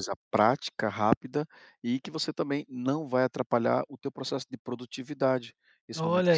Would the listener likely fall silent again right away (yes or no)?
no